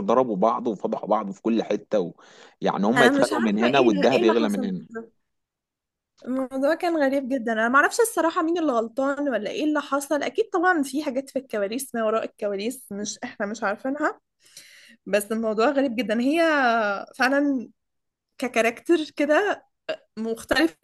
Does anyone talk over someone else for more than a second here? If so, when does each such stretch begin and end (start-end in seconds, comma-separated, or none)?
3.0-4.7